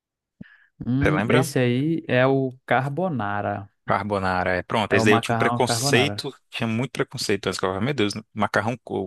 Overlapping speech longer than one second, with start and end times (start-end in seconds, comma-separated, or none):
4.9-6.2